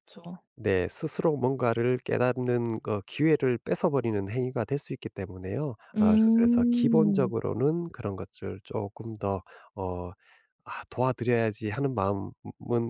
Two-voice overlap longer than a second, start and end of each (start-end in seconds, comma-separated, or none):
6.0-7.3